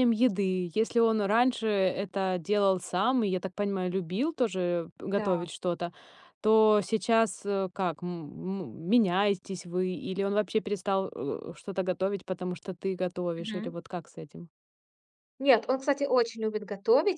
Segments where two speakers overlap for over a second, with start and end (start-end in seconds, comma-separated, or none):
none